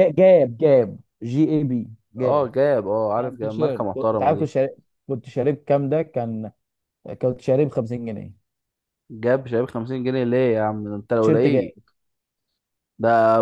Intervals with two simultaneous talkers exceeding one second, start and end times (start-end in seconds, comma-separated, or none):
3.2-4.5